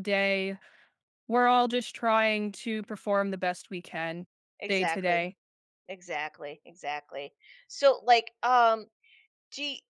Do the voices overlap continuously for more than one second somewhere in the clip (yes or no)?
no